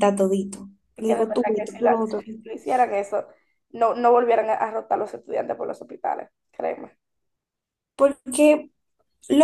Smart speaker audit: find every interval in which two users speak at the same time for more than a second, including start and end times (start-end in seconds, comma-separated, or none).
1.0-2.2